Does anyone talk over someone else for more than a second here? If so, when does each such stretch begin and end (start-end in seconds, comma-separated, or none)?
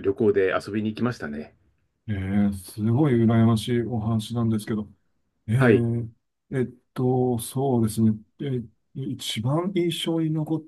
none